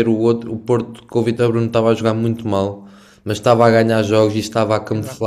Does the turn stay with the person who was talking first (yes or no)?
yes